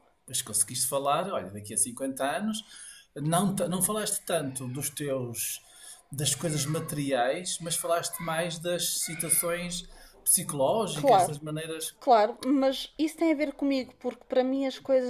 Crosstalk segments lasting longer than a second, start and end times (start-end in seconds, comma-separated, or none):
none